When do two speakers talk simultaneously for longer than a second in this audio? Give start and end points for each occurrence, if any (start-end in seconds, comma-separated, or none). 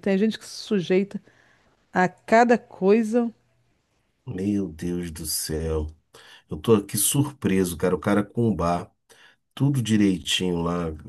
none